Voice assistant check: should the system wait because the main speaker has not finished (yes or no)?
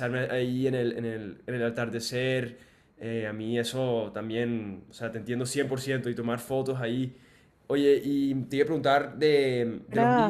no